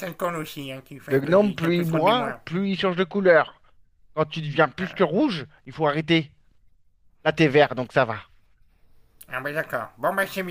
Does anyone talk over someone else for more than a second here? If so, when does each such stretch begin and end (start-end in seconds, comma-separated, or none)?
1.1-2.4